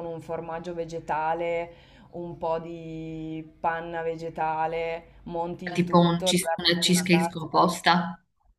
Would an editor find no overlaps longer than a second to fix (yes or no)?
no